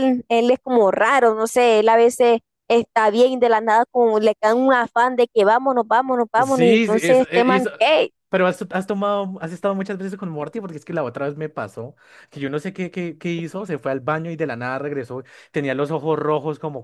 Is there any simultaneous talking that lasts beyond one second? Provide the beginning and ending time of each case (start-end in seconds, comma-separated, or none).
6.4-7.7